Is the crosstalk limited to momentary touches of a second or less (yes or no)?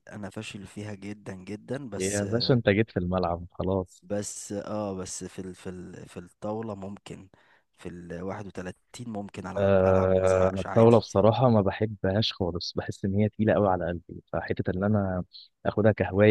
no